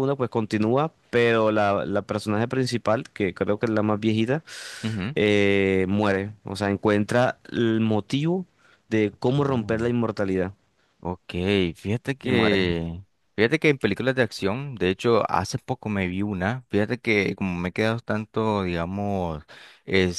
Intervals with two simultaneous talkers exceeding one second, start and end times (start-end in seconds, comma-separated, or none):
none